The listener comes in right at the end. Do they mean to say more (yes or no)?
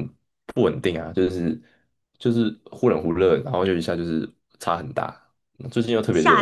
yes